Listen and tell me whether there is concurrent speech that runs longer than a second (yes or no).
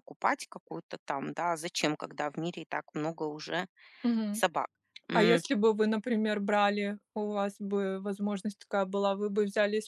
no